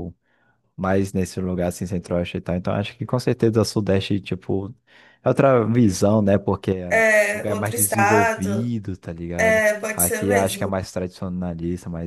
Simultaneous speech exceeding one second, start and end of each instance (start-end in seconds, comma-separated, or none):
6.9-8.7, 9.4-10.7